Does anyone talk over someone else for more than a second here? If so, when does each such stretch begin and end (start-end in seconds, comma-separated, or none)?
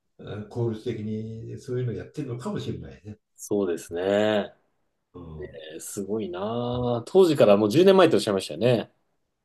none